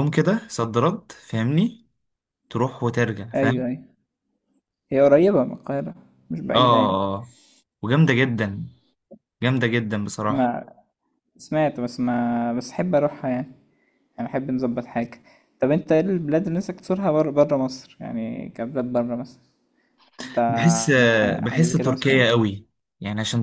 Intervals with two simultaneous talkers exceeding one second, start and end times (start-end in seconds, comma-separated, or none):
20.9-22.2